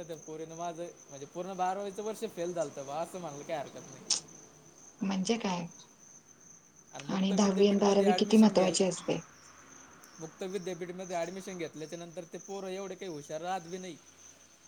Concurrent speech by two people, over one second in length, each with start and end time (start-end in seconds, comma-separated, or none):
7.2-8.8